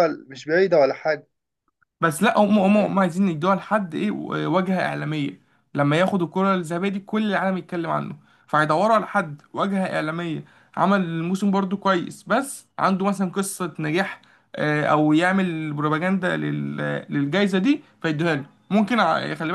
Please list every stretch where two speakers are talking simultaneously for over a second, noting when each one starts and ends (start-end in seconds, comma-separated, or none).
none